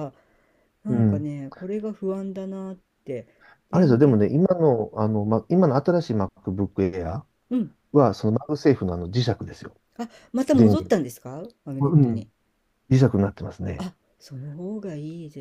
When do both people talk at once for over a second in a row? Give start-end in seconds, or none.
none